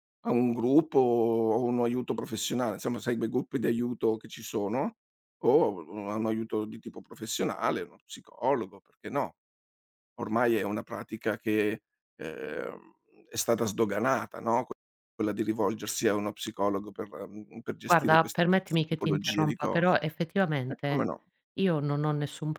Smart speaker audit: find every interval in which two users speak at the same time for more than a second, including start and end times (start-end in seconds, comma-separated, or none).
17.8-20.0